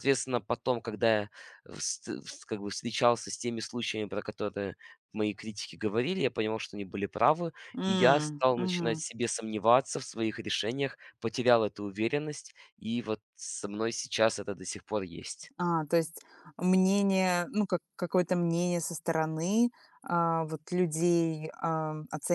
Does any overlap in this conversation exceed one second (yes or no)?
yes